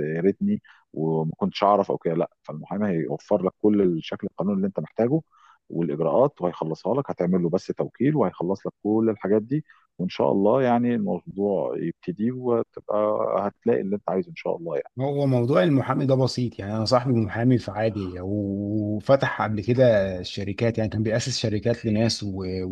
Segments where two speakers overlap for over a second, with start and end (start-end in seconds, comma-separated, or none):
none